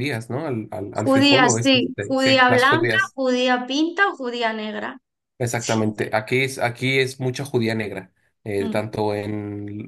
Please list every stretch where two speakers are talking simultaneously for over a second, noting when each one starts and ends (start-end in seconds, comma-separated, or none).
0.9-3.2